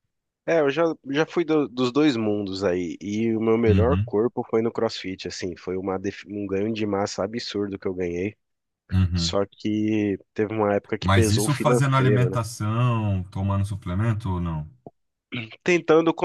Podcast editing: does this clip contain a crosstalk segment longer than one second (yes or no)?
yes